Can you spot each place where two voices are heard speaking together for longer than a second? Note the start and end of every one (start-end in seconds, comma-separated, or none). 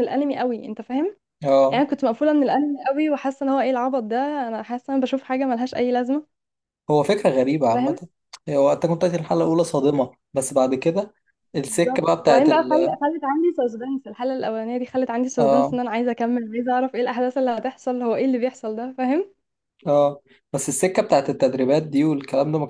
11.6-13.0